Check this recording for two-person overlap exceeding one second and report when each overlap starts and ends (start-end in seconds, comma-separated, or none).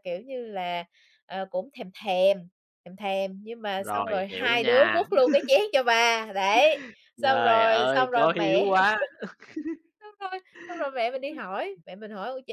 3.8-5.1, 7.2-8.7